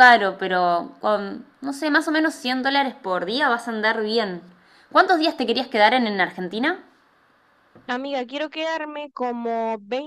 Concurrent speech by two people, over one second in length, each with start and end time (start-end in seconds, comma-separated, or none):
none